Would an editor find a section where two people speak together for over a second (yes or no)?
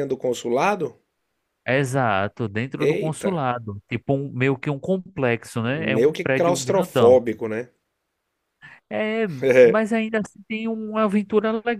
yes